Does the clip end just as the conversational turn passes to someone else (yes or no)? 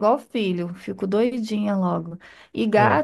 no